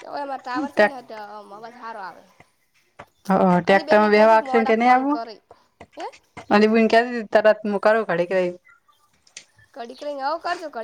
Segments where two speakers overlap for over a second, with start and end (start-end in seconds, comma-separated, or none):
3.6-5.2